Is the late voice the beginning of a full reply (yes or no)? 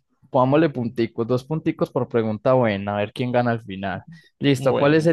no